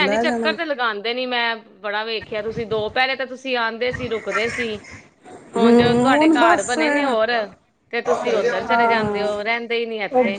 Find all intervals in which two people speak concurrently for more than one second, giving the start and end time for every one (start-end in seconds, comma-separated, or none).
5.6-7.2